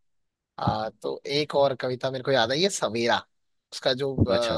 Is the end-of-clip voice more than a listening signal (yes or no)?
no